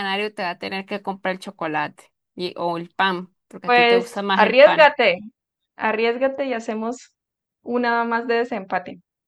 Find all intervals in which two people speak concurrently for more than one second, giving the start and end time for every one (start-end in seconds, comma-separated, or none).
3.6-4.9